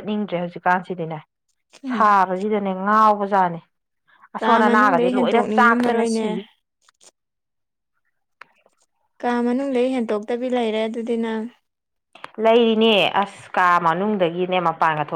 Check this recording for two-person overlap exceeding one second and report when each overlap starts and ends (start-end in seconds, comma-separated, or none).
4.4-6.3